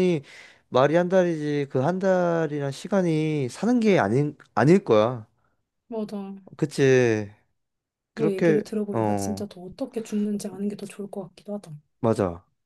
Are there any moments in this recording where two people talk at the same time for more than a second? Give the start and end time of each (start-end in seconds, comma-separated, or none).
8.1-9.5